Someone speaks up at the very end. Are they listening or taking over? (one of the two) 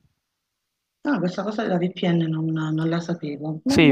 taking over